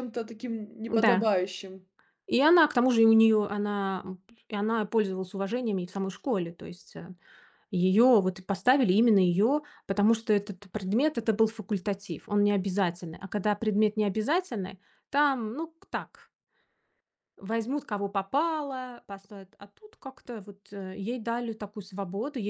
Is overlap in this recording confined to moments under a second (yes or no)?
yes